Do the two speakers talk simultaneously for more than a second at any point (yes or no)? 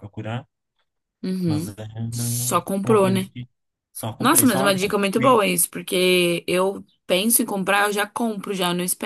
yes